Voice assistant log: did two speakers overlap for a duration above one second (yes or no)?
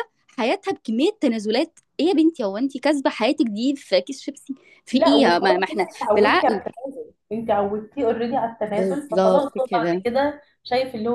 yes